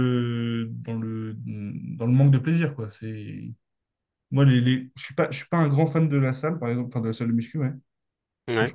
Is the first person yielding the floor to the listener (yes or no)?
no